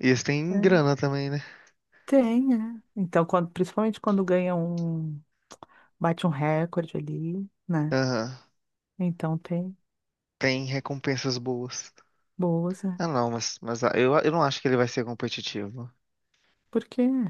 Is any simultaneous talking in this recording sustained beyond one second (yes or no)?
no